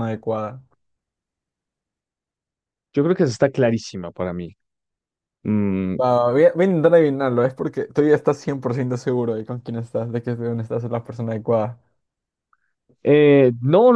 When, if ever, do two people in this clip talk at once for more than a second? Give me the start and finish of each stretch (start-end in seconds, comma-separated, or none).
none